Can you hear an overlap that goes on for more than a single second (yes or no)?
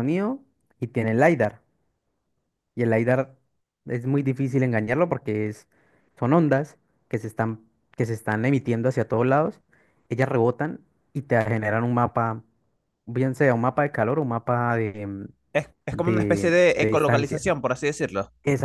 yes